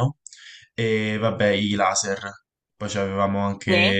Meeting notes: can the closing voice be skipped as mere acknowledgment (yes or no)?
yes